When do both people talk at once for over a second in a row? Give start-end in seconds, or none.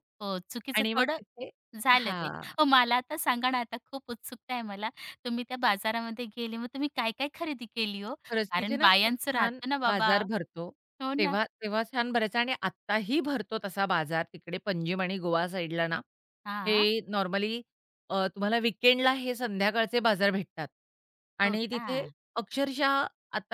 8.5-10.2